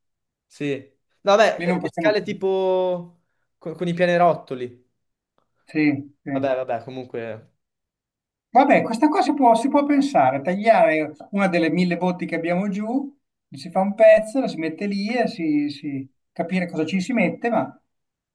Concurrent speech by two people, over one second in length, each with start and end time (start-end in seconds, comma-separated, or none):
none